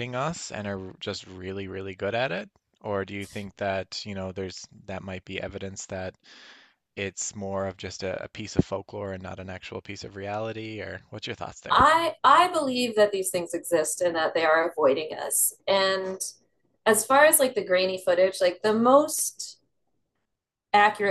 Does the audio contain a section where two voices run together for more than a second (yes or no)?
no